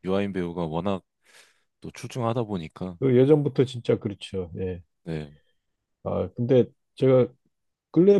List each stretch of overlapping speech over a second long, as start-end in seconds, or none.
none